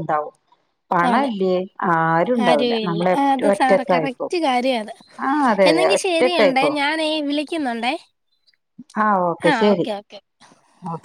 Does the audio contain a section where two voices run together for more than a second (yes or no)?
yes